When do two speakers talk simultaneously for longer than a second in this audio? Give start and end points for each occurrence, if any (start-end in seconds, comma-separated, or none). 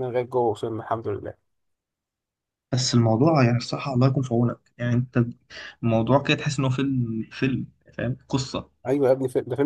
none